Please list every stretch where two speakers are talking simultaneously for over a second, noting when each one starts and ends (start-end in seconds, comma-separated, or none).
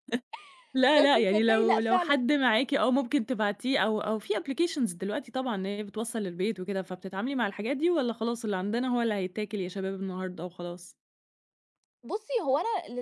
0.9-2.2